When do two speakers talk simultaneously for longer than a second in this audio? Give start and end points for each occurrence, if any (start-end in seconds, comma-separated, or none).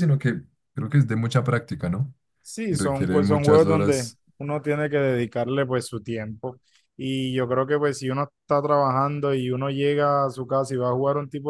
2.7-4.2